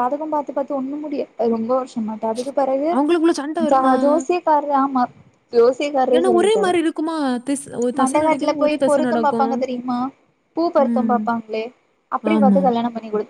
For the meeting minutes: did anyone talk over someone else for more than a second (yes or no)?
yes